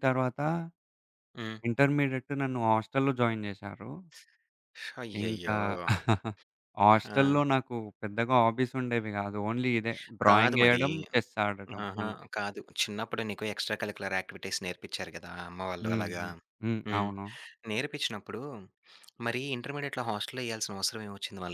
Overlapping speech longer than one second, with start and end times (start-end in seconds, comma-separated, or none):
none